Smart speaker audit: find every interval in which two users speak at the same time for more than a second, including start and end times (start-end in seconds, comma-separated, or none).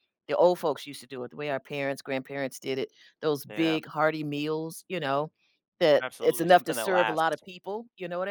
6.0-7.4